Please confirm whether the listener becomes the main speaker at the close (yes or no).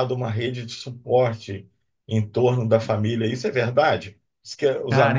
no